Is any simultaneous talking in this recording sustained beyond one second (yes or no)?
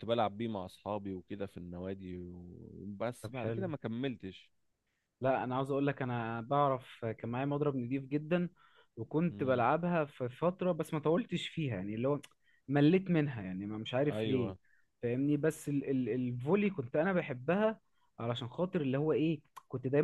no